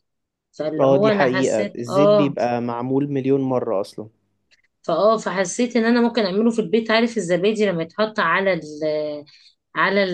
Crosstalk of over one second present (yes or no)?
yes